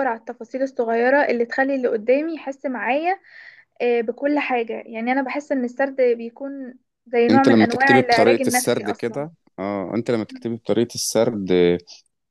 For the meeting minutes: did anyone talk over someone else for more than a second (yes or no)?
yes